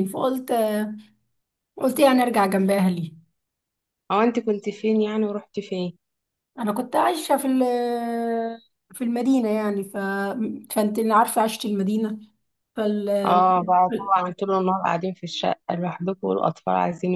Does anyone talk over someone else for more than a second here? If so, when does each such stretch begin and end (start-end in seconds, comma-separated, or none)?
none